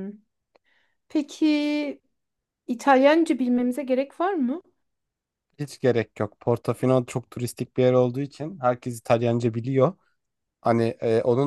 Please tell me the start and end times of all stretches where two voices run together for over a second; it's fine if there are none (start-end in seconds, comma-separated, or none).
none